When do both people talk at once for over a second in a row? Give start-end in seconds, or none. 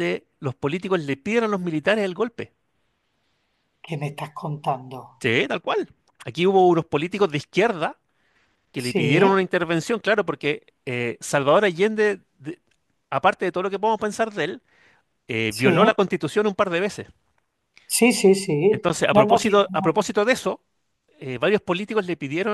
18.7-20.1